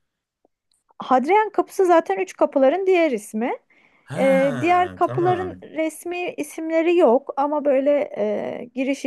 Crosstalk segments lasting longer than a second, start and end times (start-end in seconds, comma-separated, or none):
4.2-5.6